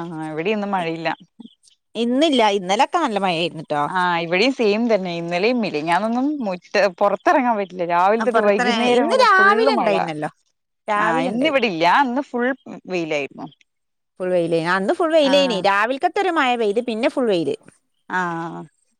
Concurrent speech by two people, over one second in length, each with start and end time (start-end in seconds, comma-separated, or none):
8.2-9.9